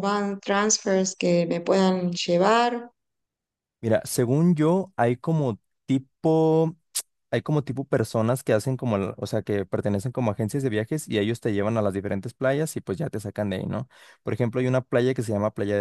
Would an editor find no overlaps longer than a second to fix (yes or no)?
yes